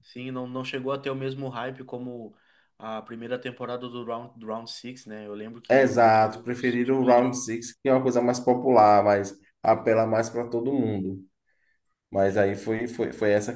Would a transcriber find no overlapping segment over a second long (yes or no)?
no